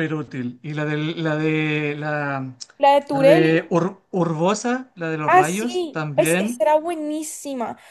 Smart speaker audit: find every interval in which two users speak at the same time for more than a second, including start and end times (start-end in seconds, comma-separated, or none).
5.2-6.6